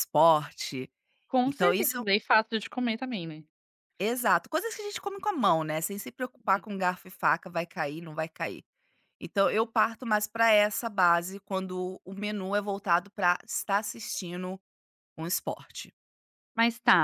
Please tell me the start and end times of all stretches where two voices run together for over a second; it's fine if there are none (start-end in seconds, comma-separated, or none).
none